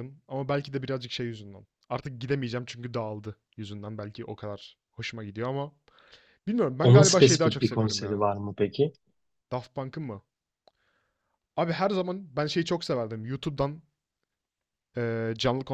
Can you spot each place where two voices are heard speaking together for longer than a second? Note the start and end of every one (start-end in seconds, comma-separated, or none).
6.8-8.3